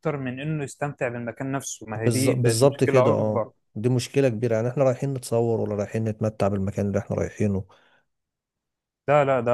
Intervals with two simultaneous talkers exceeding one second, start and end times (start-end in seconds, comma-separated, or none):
1.9-3.5